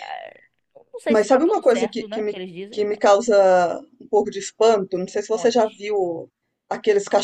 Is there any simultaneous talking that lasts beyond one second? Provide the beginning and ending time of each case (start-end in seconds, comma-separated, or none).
1.1-3.0